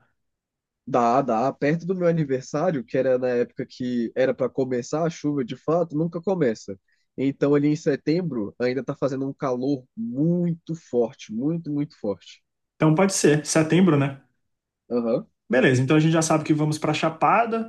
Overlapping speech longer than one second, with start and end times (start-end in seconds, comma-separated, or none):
none